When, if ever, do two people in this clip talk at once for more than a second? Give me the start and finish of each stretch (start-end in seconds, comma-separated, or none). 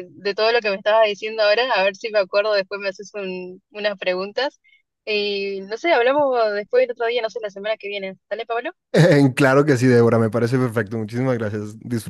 none